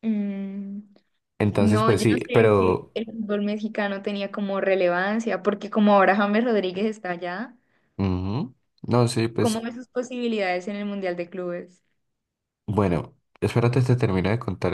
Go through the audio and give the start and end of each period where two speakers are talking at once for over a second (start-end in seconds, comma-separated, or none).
1.6-2.9